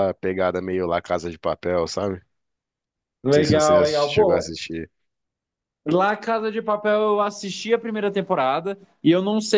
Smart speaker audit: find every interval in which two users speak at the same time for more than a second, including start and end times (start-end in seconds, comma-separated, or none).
3.3-4.5